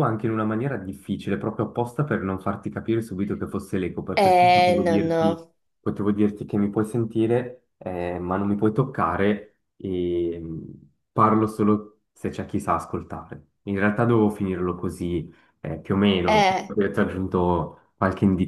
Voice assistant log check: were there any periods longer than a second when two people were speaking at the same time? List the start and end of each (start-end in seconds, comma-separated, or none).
4.1-5.4